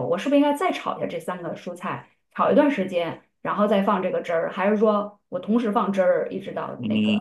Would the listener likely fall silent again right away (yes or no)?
no